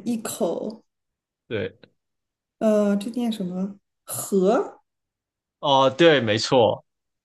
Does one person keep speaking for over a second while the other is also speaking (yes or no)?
no